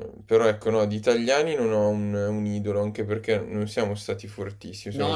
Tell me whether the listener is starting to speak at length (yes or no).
yes